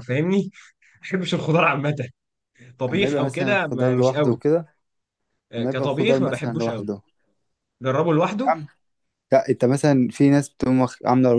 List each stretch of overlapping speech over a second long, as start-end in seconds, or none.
2.9-4.4, 5.6-6.9